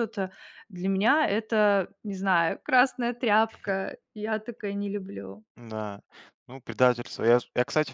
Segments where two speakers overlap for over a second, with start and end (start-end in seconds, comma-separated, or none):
none